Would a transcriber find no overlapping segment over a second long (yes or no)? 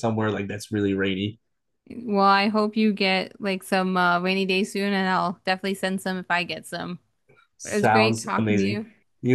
no